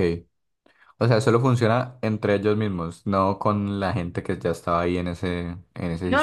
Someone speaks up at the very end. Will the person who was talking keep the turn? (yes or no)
no